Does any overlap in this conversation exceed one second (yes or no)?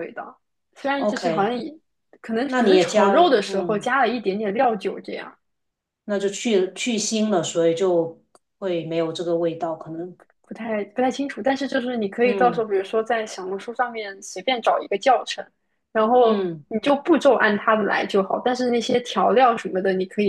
yes